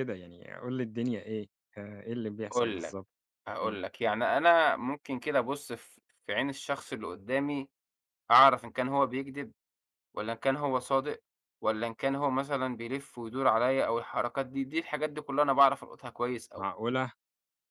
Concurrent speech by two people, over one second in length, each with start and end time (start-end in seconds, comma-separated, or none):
none